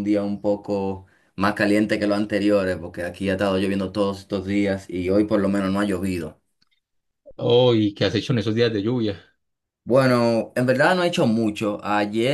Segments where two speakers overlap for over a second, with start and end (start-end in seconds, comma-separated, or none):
none